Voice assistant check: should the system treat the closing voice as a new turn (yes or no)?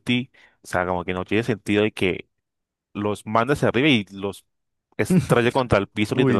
yes